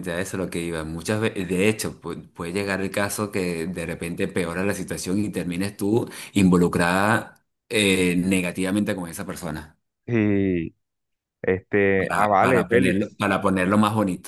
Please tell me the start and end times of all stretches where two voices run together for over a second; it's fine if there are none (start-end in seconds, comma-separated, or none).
12.0-13.2